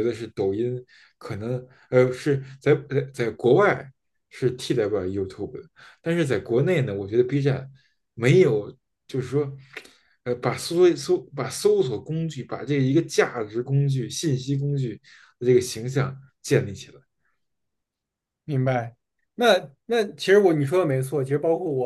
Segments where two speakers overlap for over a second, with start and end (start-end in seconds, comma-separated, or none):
none